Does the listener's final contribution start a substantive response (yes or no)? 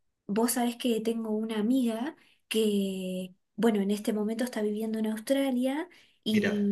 no